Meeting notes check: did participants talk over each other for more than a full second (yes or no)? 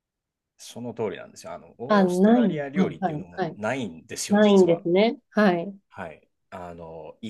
yes